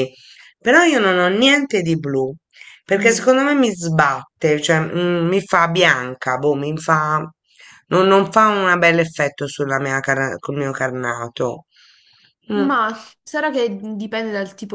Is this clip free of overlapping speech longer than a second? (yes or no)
yes